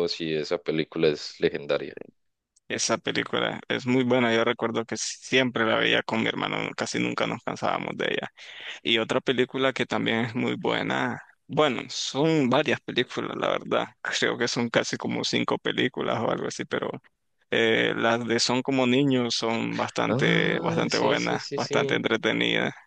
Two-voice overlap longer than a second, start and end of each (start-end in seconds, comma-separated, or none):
20.1-22.0